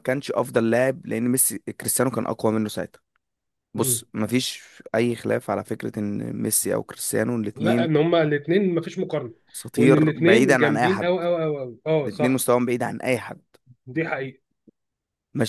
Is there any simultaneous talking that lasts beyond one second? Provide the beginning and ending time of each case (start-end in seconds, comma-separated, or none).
9.8-11.1